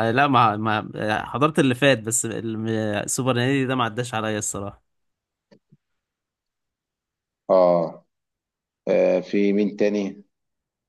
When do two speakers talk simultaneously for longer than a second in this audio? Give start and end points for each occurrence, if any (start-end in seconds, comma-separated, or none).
none